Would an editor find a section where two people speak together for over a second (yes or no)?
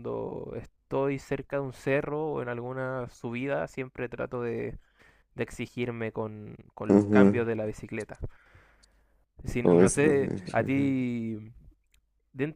yes